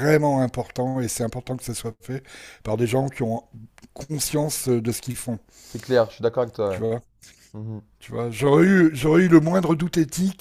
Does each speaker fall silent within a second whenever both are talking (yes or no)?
yes